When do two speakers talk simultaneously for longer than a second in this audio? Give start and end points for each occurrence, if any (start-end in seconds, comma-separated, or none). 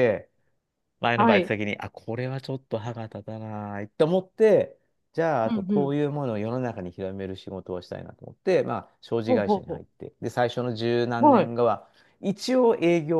none